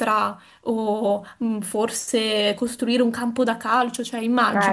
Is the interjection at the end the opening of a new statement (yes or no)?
yes